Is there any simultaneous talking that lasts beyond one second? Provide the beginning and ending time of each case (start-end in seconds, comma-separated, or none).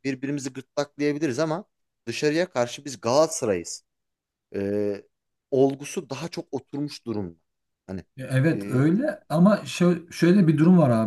none